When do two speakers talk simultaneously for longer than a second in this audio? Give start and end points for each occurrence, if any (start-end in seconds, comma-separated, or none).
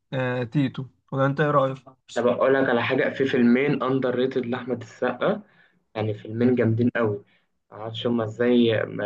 none